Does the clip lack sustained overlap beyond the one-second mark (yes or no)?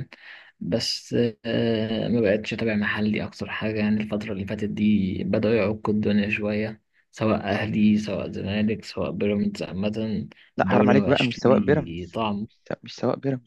no